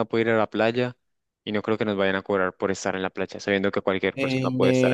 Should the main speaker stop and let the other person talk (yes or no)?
yes